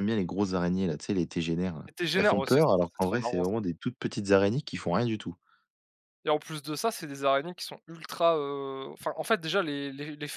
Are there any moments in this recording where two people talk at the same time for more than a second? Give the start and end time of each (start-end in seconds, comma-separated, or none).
1.9-3.5